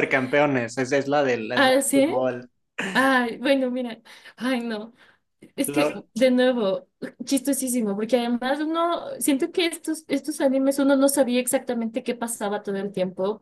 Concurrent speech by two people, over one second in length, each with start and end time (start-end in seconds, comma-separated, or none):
none